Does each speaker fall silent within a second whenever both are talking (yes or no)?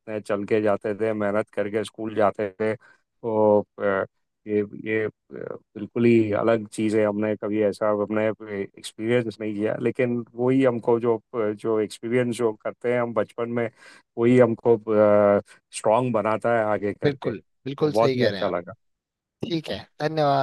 no